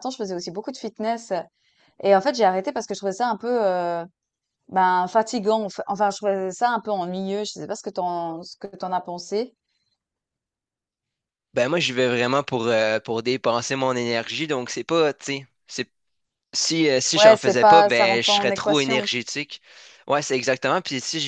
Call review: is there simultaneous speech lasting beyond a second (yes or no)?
yes